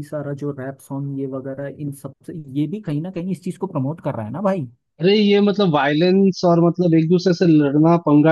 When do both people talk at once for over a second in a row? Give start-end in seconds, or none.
none